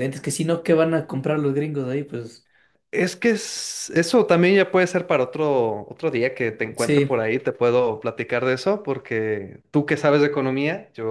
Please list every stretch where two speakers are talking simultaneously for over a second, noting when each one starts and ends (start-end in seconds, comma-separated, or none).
none